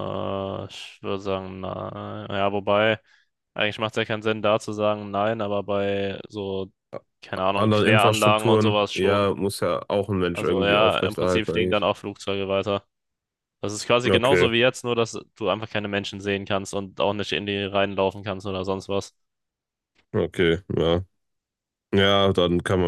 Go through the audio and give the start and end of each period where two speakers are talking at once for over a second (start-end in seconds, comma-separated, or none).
7.5-9.3, 10.3-11.9